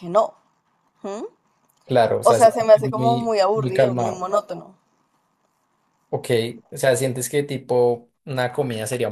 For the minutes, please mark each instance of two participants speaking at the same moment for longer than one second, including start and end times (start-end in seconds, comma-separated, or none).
2.2-4.3